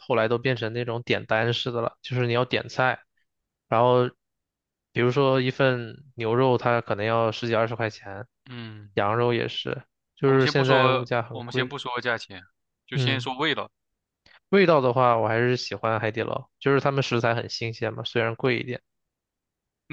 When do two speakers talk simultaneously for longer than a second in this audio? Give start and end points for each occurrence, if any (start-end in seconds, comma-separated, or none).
10.2-11.7